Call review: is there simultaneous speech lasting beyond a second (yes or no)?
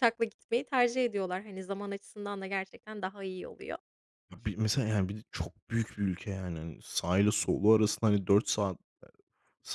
no